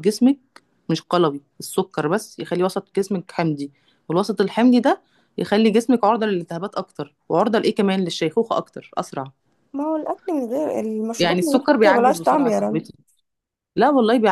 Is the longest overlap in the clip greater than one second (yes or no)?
yes